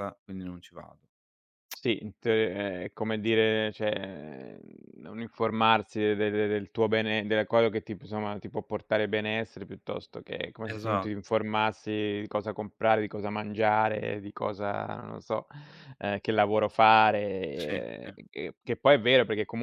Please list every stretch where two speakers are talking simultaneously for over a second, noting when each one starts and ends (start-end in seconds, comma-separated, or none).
none